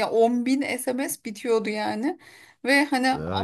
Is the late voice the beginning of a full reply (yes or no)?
no